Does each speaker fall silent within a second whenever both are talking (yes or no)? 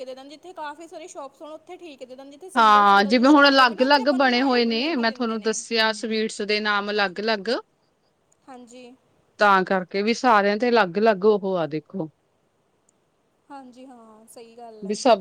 no